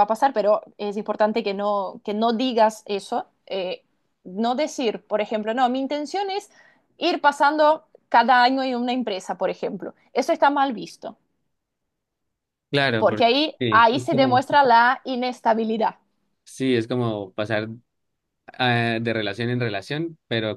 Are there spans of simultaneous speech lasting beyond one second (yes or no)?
yes